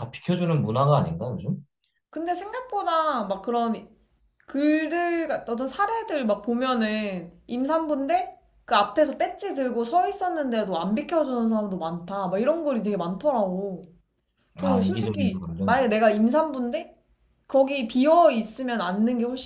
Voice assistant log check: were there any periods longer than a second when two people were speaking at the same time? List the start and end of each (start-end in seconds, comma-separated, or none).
14.6-15.9